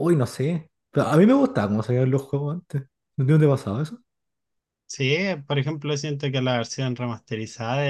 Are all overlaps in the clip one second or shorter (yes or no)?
yes